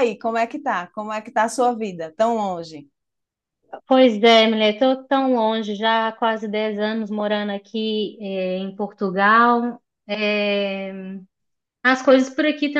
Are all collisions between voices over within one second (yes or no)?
yes